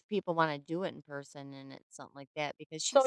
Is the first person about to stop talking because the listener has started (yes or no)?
yes